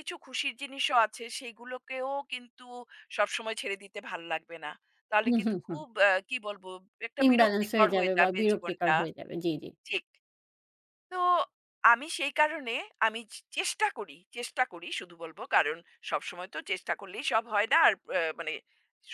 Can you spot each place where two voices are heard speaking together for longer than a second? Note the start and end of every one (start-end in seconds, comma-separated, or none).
7.3-8.9